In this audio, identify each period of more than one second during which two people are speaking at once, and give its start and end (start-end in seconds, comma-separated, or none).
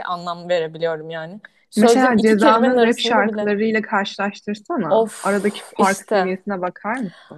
1.8-3.5, 4.9-6.4